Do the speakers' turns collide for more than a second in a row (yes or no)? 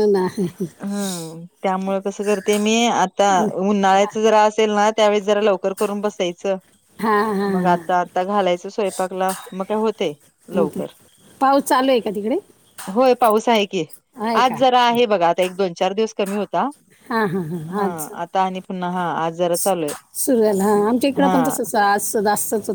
no